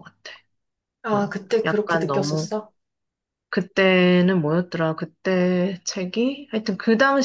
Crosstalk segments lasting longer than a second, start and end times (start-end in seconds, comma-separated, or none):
1.1-2.5